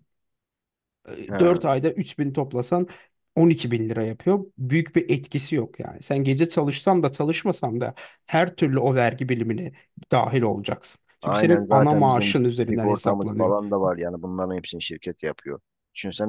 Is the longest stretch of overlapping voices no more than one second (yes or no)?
no